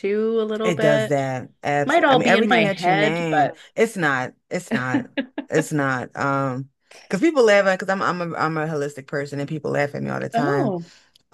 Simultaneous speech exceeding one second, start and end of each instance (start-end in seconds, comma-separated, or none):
1.9-3.6